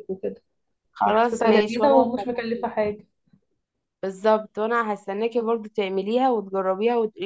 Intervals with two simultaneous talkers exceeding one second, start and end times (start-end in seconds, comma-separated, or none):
1.1-2.3